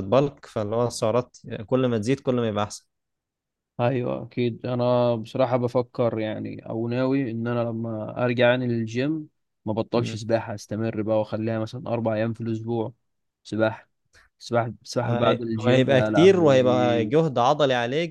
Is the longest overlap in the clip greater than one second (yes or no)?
yes